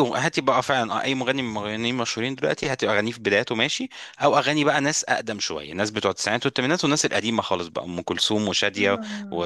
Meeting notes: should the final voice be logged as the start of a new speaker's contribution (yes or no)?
no